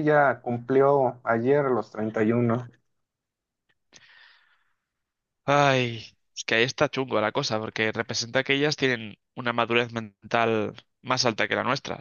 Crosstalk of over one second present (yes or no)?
no